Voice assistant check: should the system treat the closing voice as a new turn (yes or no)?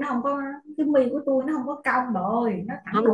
yes